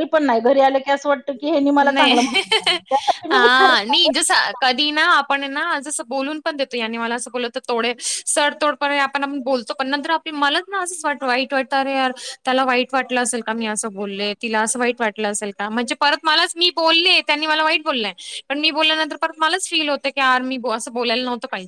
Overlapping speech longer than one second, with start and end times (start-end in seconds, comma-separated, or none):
none